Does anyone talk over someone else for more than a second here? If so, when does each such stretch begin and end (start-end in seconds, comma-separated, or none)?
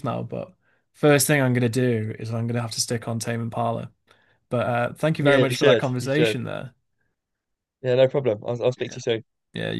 5.2-6.4